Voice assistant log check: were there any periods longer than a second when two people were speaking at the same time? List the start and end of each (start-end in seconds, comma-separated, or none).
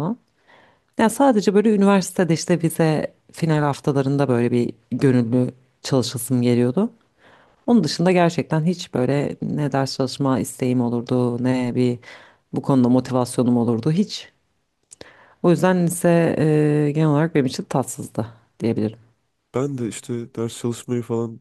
none